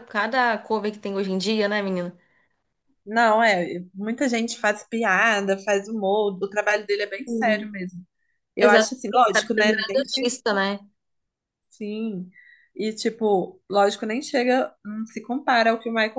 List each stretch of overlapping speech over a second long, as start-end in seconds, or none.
8.6-10.0